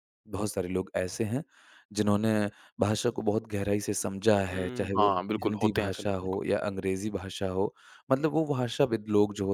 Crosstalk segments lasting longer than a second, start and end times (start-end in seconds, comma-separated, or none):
4.5-6.4